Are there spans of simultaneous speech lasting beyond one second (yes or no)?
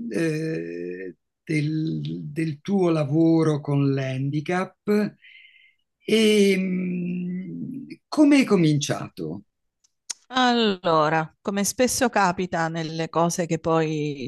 no